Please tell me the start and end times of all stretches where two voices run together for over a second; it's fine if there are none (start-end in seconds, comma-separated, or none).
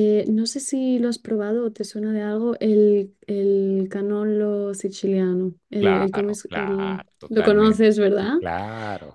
5.8-8.4